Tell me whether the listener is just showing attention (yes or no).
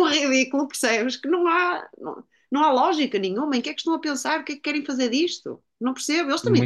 yes